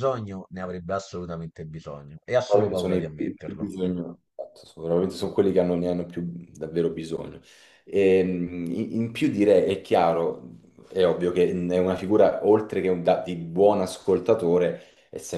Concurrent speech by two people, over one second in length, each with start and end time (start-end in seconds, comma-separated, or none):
2.4-3.7